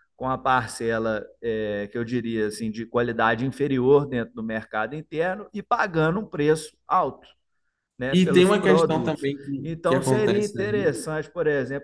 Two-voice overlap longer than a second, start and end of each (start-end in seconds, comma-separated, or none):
8.1-11.1